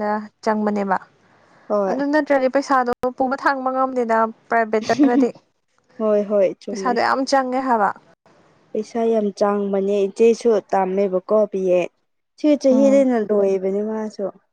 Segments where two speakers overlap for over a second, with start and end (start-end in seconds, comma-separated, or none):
none